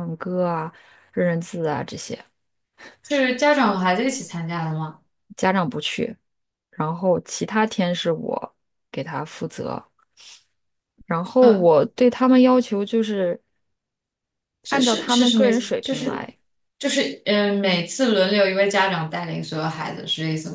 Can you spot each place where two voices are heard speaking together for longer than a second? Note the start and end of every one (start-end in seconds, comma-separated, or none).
14.7-16.3